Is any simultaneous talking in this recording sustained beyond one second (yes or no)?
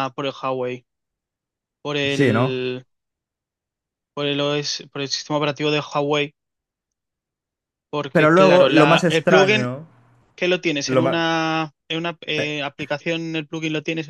yes